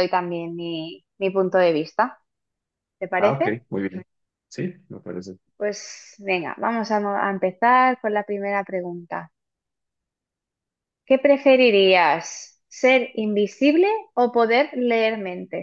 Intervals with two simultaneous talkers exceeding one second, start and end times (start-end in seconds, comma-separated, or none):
none